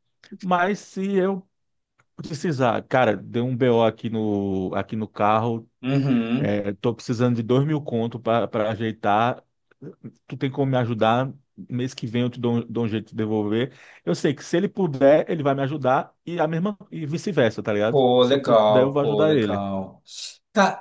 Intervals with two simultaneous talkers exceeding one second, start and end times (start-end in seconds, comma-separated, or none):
17.9-19.6